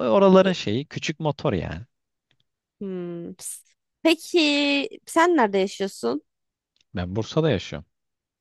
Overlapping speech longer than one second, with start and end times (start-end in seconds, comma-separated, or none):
none